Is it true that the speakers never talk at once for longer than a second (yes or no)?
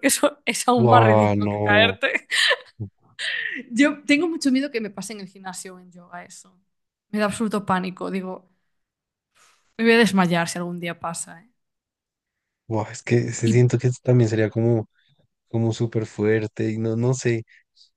no